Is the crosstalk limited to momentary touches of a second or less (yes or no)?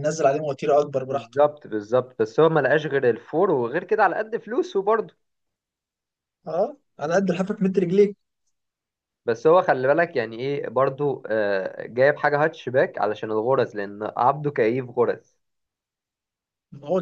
yes